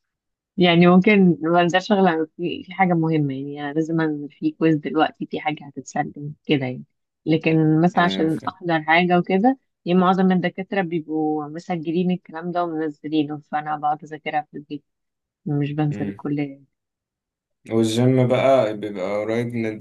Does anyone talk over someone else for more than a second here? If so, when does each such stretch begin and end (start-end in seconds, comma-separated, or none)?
none